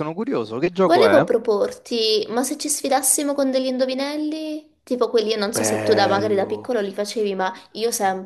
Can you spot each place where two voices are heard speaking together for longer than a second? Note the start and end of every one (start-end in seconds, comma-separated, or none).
5.5-6.8